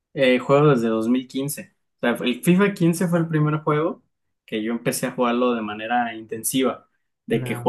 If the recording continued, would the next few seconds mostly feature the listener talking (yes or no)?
no